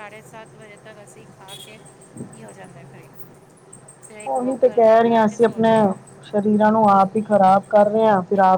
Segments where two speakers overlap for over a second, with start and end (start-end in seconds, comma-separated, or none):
4.3-5.7